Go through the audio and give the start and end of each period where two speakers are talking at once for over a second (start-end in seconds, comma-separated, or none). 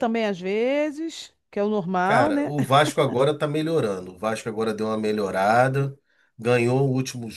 none